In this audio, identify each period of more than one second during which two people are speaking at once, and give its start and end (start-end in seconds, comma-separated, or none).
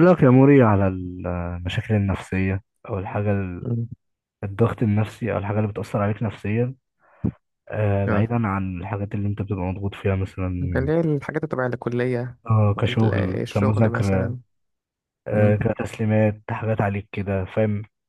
12.9-14.4